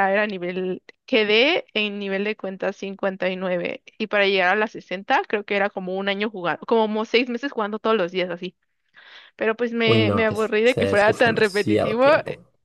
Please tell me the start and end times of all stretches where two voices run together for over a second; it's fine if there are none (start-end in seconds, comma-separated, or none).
9.8-12.1